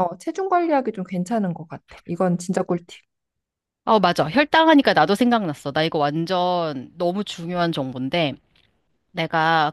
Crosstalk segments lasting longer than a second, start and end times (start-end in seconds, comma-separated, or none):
none